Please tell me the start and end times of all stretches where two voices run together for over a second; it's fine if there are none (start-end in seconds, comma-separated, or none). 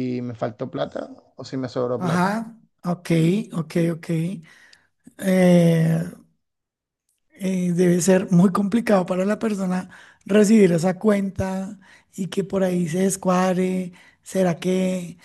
none